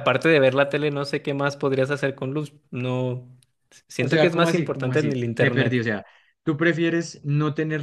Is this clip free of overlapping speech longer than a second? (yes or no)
no